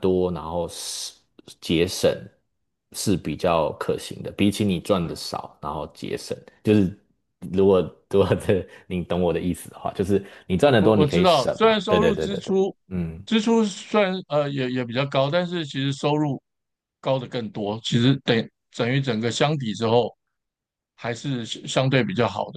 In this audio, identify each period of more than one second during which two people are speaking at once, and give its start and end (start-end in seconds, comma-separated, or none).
10.6-12.8